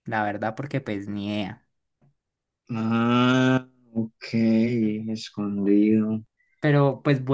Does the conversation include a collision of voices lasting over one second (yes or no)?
no